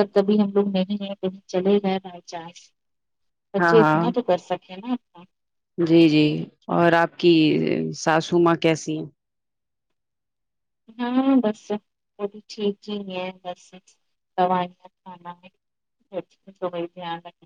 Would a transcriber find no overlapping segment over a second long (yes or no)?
yes